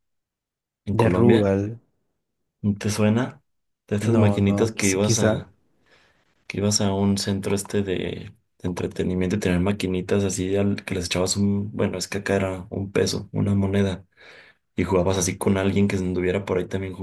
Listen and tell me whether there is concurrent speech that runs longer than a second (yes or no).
yes